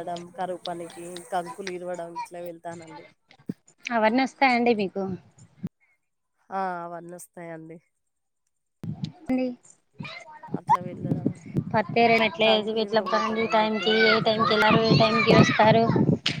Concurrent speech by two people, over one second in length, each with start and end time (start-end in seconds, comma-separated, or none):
12.5-15.1